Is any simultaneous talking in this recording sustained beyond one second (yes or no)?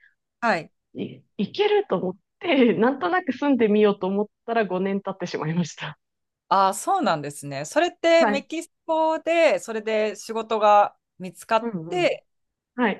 no